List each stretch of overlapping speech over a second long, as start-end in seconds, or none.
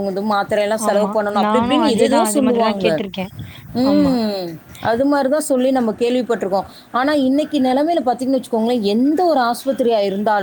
0.9-2.9